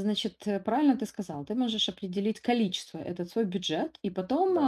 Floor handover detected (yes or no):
no